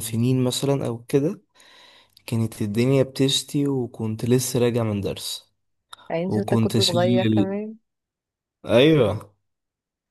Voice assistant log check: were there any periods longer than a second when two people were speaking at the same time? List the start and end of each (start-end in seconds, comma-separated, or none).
6.3-7.5